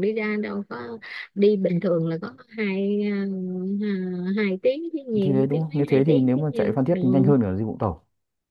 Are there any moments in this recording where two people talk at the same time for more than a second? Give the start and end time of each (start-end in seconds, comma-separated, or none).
5.2-7.0